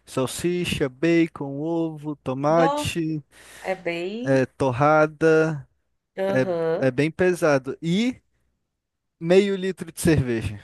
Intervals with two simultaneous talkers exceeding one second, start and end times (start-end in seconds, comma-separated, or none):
none